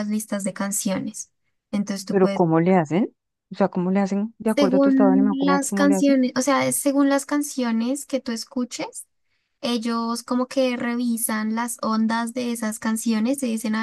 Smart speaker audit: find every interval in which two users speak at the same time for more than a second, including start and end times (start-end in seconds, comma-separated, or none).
4.5-6.2